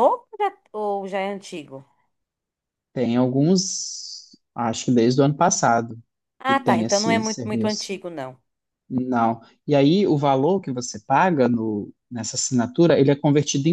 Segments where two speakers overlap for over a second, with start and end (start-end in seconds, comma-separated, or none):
6.5-7.9